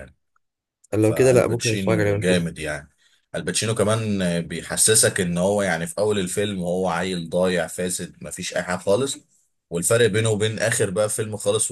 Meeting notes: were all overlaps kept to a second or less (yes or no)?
no